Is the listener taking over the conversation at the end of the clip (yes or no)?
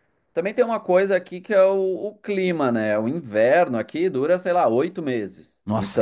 yes